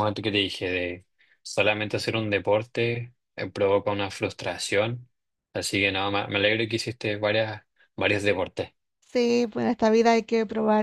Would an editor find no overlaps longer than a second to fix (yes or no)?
yes